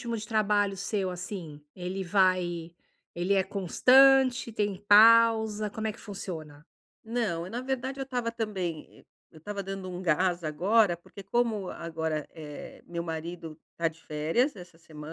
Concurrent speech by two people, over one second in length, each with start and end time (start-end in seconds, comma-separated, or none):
none